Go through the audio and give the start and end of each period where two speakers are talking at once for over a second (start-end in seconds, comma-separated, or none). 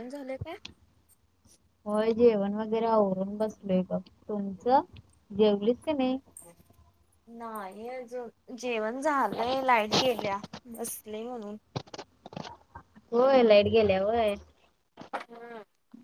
none